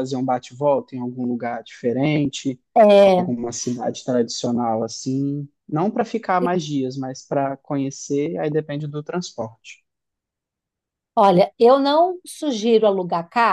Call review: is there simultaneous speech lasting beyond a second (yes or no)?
no